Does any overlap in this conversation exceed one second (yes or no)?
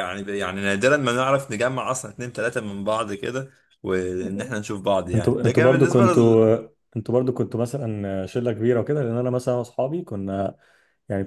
yes